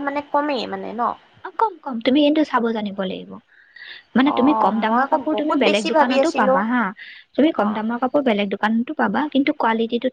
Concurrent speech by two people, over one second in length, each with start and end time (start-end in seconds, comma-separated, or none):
4.3-6.6